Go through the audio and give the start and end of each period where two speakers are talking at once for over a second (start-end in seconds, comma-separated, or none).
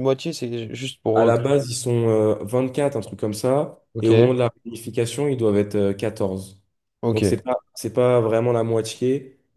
none